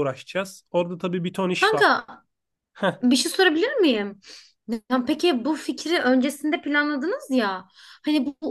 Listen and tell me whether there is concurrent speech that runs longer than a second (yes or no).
no